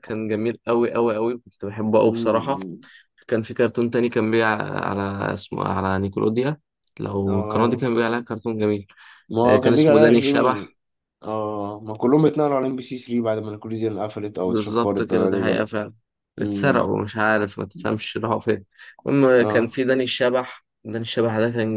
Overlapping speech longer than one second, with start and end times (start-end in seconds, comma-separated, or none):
9.4-10.7, 14.4-15.7